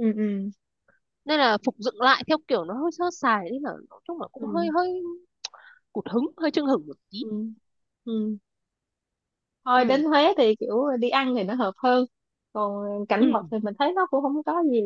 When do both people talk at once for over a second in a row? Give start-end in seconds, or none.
none